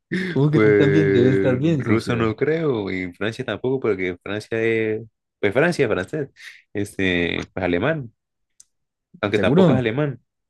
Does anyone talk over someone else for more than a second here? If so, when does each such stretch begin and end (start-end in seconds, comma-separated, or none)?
0.5-2.3